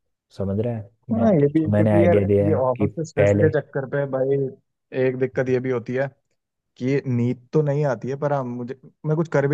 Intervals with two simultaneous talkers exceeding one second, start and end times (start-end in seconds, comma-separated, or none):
1.1-3.5